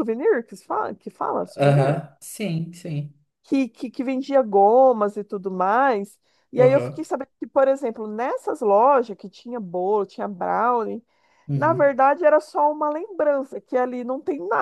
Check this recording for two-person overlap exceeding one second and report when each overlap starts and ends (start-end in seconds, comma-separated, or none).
none